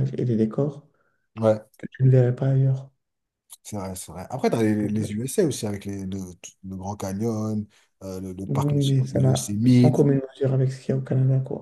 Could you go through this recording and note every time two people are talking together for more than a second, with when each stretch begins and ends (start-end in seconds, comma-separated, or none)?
8.5-10.1